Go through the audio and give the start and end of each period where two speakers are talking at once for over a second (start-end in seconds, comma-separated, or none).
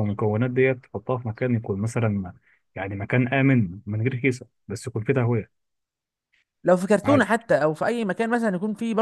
none